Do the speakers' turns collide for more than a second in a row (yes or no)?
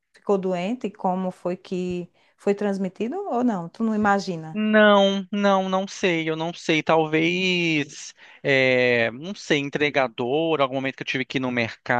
no